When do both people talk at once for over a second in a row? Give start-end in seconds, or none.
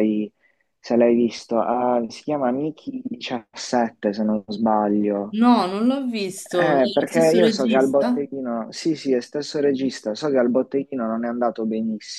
6.5-8.2